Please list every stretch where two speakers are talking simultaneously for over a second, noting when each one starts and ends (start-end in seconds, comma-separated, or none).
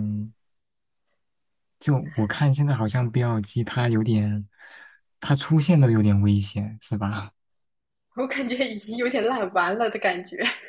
none